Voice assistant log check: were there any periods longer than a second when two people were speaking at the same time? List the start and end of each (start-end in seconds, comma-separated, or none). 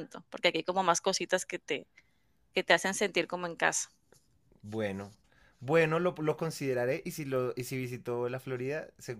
none